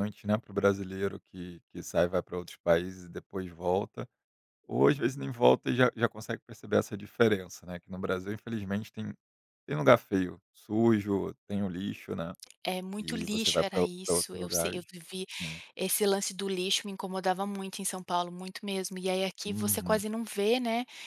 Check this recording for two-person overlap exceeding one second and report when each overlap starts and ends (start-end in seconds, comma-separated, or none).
13.0-14.8